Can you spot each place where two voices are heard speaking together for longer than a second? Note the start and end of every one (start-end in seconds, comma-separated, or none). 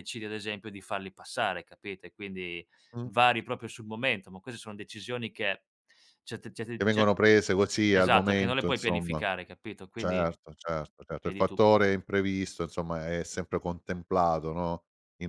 7.9-9.2